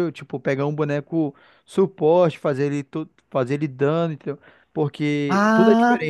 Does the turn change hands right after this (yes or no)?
yes